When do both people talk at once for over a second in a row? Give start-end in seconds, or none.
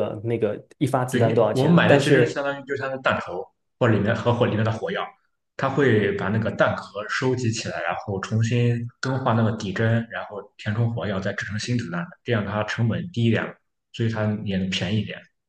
1.1-2.4